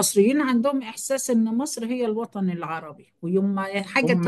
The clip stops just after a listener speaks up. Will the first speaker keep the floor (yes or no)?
yes